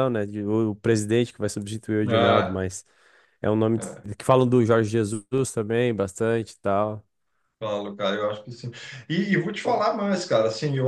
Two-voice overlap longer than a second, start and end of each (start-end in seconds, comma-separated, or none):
none